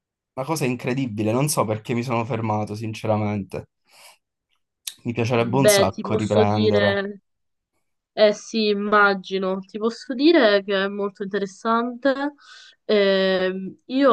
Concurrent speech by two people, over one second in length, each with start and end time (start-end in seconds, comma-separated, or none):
5.3-7.1